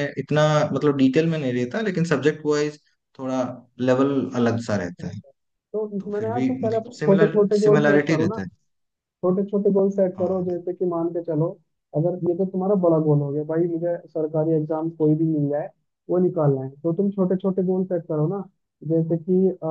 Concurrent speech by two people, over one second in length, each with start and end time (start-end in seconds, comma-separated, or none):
6.0-8.4